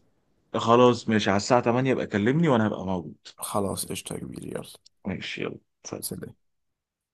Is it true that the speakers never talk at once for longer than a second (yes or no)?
yes